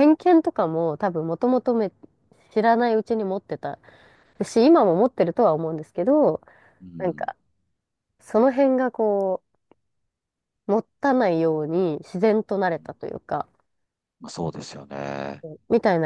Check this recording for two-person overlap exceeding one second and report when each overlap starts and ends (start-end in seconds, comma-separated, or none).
none